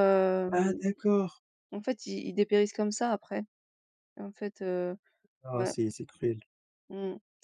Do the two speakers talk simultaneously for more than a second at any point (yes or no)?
no